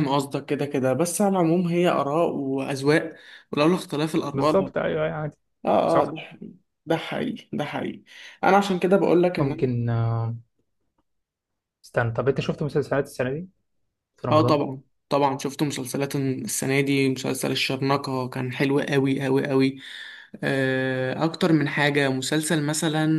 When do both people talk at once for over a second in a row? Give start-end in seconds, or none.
none